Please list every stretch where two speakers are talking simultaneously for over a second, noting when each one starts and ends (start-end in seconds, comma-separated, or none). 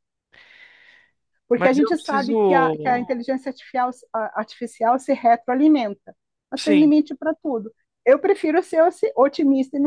1.6-3.1